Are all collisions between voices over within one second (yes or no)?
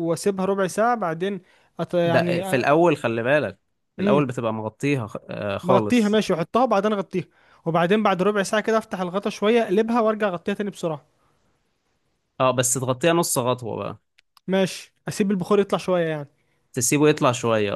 yes